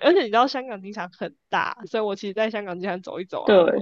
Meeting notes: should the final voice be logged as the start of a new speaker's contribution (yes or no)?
no